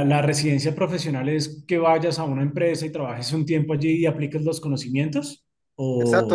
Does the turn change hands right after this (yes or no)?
yes